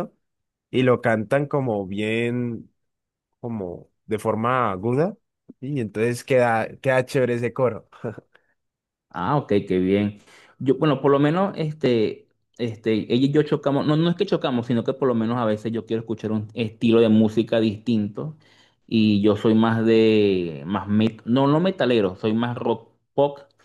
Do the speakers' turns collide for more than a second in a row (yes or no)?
no